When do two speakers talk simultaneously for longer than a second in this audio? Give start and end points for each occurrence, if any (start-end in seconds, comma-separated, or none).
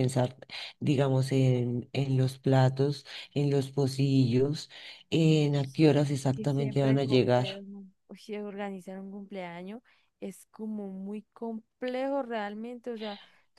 6.3-7.6